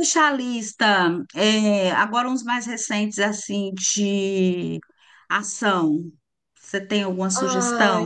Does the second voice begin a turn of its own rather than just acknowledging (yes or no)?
yes